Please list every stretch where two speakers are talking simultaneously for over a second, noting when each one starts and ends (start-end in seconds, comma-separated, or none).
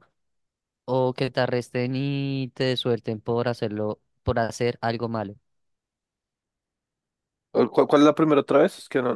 none